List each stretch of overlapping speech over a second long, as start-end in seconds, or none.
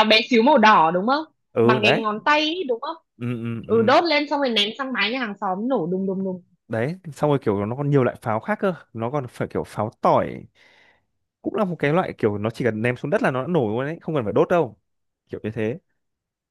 none